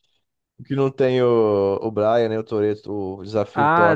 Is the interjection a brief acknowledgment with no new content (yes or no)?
no